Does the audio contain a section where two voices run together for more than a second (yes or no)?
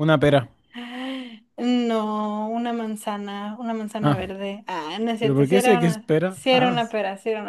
yes